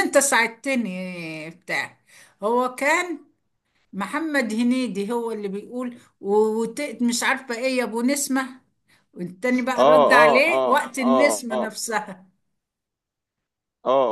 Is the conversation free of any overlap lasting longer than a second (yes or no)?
no